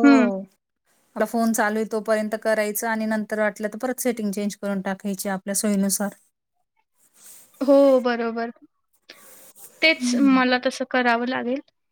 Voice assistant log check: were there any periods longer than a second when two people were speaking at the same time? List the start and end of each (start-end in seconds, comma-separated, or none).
none